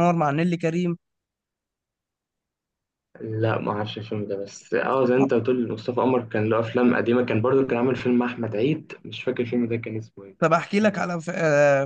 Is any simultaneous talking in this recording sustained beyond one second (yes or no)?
no